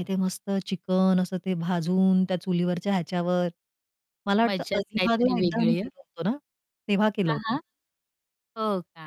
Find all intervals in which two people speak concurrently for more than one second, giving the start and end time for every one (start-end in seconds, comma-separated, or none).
4.5-5.9